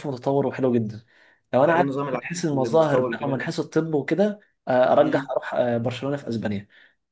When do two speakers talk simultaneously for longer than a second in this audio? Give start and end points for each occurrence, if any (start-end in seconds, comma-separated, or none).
1.6-3.5